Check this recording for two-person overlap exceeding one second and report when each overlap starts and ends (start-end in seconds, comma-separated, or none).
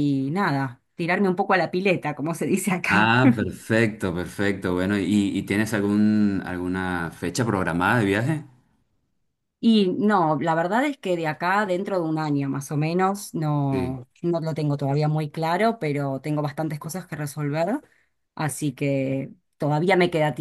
none